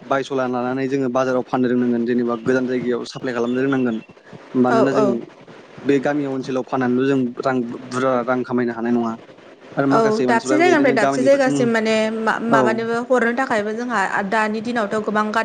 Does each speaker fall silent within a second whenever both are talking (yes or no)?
no